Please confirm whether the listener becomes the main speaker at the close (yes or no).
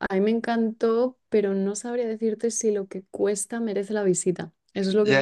yes